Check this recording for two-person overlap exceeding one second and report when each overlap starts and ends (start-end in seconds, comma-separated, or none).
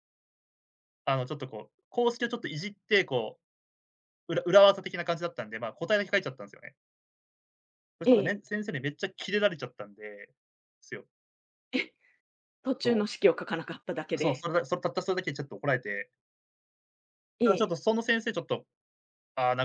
none